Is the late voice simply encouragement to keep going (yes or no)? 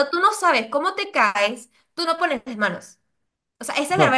yes